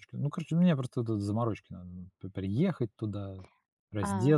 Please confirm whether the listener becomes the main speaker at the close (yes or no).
no